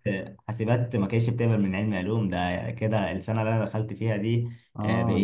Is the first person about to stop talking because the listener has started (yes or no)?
no